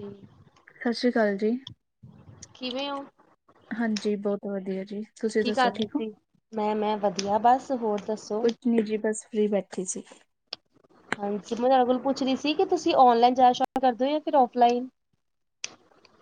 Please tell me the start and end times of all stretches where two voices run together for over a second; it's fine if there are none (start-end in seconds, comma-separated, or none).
none